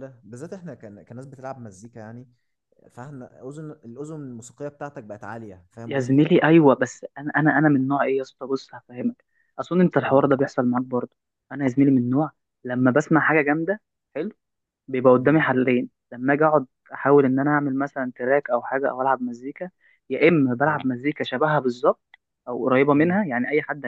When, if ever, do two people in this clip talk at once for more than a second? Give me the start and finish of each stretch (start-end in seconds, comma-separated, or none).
none